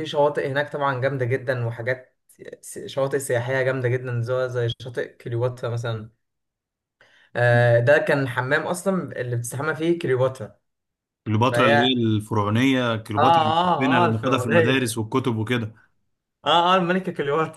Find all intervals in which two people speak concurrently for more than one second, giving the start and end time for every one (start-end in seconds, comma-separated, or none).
13.2-14.9